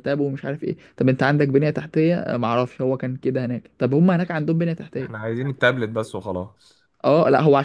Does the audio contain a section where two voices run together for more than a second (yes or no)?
no